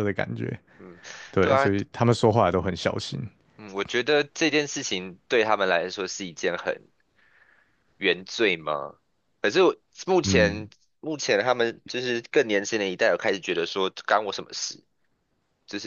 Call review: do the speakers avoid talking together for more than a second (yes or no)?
yes